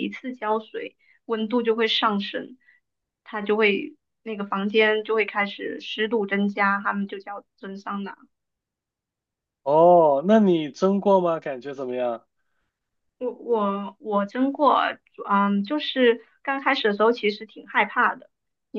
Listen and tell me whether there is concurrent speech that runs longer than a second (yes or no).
no